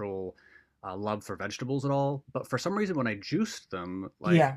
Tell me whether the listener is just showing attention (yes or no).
yes